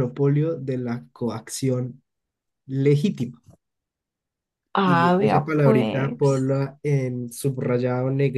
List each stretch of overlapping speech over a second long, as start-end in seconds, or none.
4.8-6.5